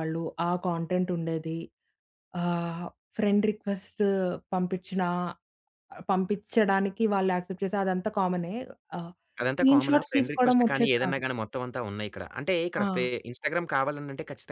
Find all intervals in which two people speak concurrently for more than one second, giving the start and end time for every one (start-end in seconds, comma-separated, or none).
9.5-11.2